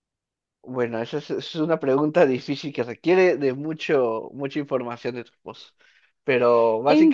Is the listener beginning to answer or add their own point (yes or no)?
no